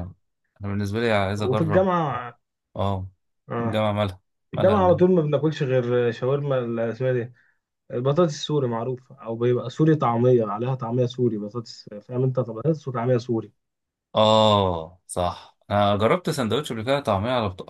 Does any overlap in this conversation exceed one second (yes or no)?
no